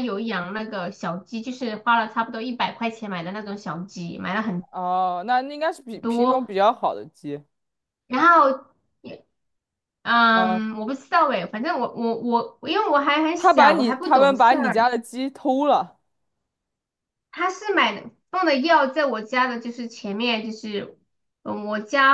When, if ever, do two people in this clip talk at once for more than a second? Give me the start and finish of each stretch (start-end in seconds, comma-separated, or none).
13.3-14.8